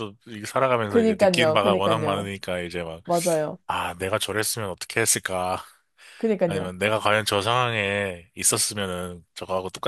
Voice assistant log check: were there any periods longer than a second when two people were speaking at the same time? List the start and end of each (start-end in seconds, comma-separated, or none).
0.9-2.3